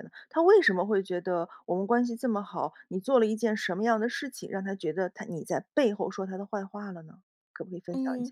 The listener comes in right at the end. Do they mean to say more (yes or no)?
yes